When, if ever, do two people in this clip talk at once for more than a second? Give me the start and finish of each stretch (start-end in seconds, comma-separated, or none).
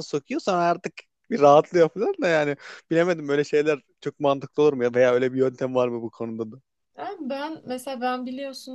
none